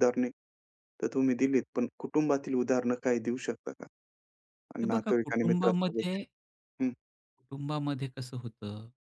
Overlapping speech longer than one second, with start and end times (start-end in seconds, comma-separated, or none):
4.8-6.2